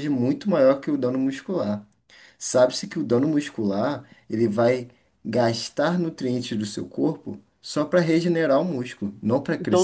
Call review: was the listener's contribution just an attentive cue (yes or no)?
no